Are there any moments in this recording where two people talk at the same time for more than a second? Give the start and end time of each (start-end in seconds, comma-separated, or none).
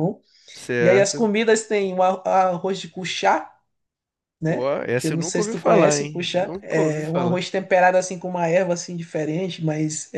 4.5-7.4